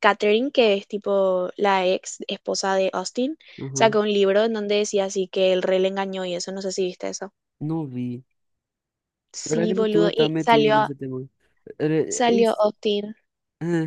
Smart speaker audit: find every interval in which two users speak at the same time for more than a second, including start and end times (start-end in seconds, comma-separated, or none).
9.4-10.9